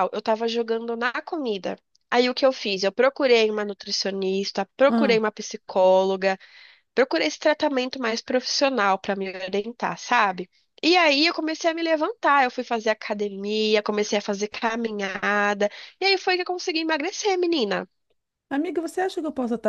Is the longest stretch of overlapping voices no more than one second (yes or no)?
yes